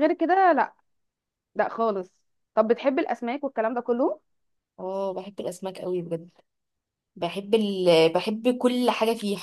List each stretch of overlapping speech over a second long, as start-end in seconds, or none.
none